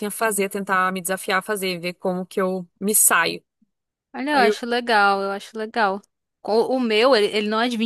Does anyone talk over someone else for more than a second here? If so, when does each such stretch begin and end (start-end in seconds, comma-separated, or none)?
none